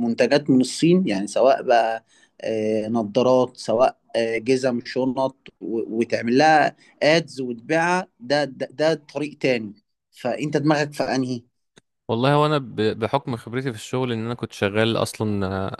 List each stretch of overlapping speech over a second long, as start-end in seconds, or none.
none